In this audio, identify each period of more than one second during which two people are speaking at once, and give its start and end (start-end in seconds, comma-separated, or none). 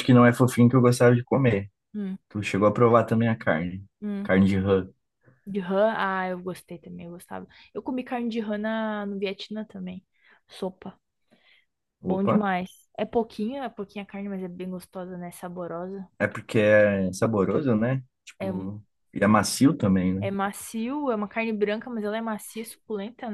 none